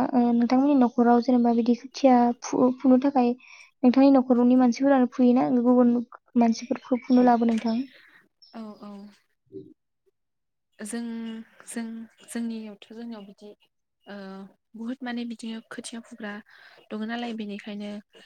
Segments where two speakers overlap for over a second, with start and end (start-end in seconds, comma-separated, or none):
none